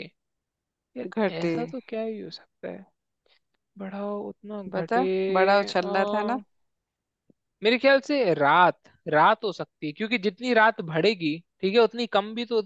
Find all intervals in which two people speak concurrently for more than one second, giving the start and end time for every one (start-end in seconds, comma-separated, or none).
4.7-6.3